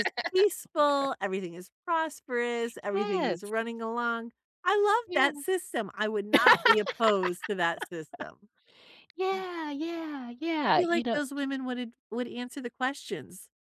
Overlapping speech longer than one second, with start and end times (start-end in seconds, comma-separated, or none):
none